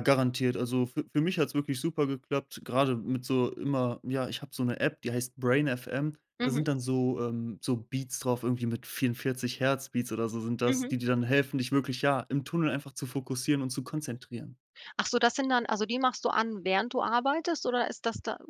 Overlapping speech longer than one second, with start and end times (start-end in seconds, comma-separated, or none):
none